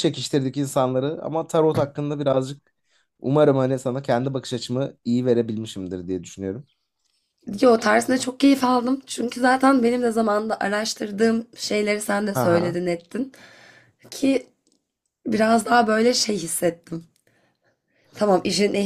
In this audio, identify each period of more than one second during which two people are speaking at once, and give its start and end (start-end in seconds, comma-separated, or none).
none